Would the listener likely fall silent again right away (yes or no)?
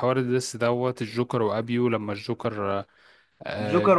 no